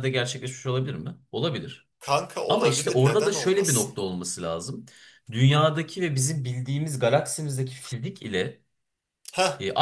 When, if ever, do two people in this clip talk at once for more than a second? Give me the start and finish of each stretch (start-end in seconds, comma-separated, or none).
2.5-4.0